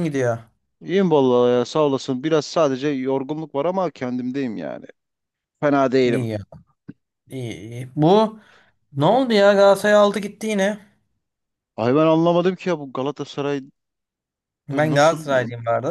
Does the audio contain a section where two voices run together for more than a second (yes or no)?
no